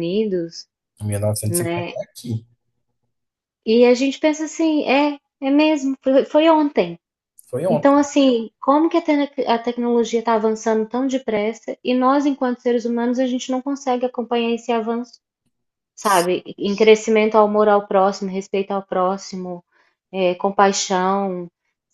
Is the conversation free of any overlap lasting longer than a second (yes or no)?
yes